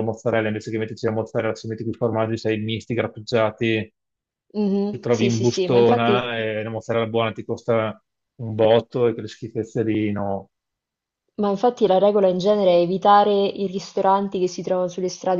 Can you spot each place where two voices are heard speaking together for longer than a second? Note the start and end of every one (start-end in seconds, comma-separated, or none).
4.9-6.3